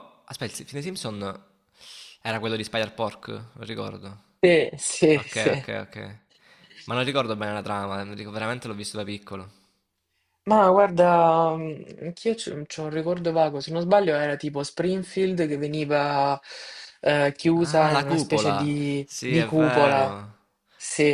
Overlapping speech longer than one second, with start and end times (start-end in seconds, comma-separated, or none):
17.5-20.1